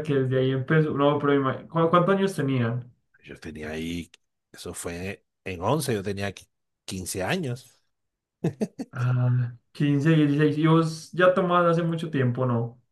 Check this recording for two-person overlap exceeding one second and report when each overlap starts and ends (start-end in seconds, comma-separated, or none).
none